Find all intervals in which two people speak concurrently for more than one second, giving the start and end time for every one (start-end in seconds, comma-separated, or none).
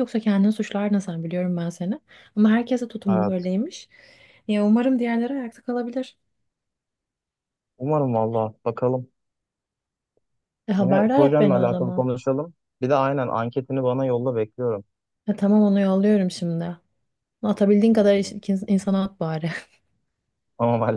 10.8-12.1